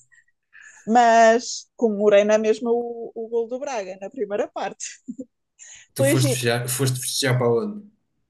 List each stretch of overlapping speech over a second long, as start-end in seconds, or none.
none